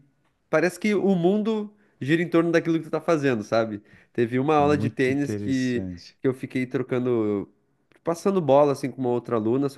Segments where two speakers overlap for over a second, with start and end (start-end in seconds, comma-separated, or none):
4.5-6.2